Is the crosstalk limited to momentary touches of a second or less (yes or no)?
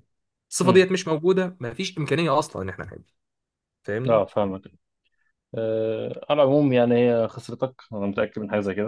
yes